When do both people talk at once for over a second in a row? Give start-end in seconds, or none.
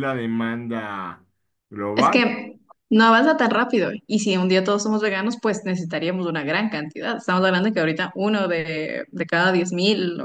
none